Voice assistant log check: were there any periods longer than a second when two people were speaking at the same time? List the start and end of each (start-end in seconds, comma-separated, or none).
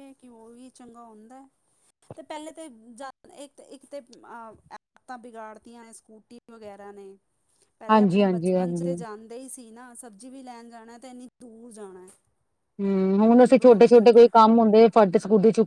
none